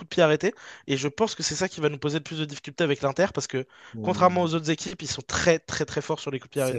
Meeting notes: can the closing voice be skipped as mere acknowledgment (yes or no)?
no